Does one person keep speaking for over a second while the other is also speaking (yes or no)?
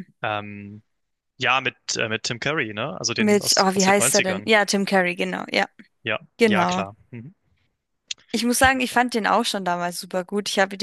yes